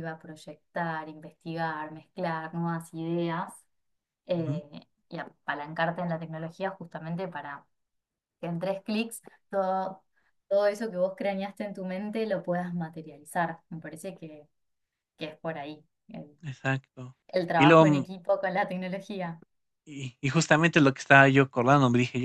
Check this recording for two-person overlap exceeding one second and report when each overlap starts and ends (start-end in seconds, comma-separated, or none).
none